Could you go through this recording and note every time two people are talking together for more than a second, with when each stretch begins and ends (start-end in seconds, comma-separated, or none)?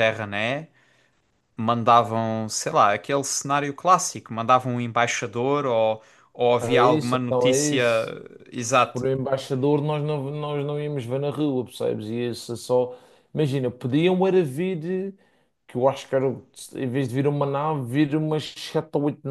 6.6-7.8